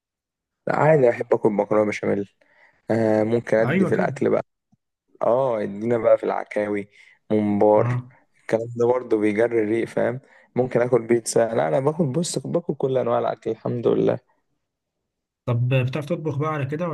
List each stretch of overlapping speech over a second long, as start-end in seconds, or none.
none